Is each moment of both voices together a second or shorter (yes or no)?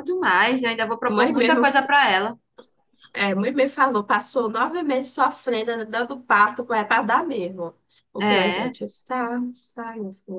yes